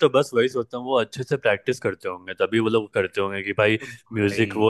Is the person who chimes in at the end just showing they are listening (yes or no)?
yes